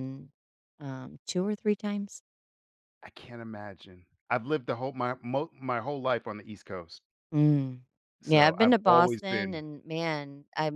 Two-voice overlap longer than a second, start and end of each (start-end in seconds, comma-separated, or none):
8.2-9.6